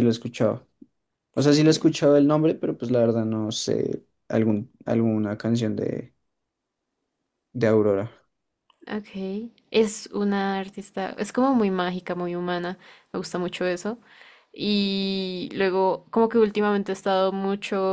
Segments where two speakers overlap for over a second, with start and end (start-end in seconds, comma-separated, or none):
none